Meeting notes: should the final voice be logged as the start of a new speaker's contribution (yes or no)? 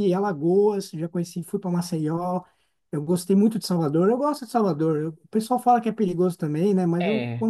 no